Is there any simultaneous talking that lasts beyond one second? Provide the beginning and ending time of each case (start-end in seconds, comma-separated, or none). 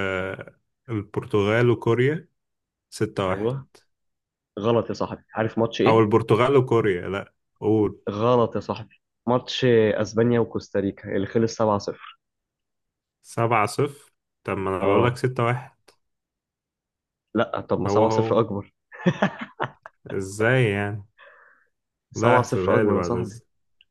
22.1-23.4